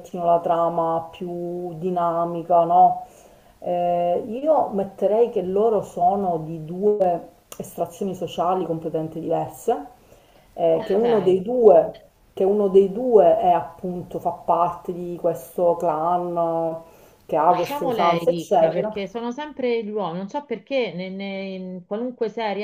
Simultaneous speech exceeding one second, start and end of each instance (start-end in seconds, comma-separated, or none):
17.4-18.9